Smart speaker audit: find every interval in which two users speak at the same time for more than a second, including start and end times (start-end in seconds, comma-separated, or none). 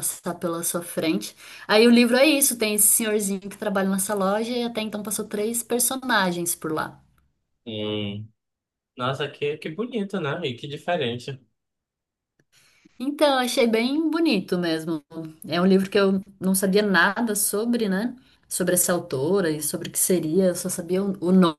none